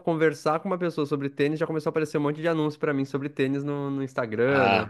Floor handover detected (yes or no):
yes